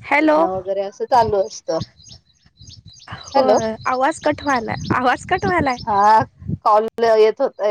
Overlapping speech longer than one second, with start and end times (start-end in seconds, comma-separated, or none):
none